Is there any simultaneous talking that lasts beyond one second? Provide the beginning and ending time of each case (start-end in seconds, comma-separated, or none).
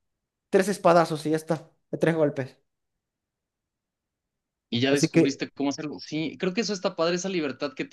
none